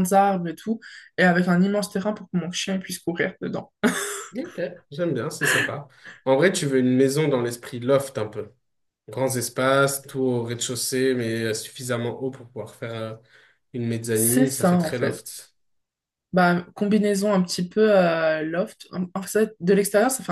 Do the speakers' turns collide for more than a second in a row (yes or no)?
yes